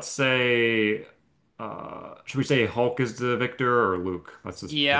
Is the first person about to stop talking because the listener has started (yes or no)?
yes